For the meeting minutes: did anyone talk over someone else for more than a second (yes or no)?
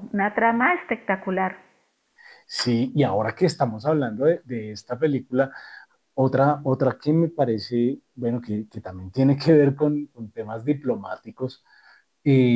no